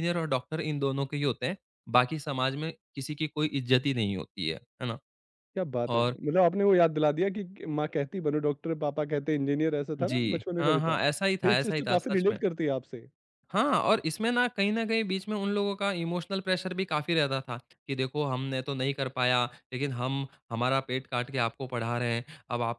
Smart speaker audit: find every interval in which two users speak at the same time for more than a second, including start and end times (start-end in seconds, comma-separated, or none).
10.0-12.4